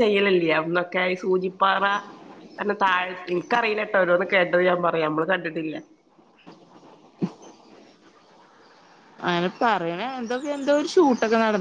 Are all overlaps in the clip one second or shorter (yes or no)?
yes